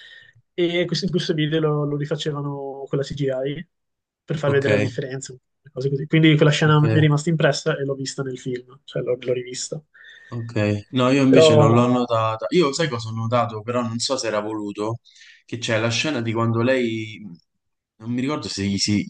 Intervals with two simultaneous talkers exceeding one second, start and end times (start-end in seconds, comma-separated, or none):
none